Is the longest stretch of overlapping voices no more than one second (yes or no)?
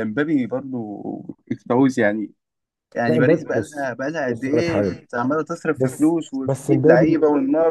no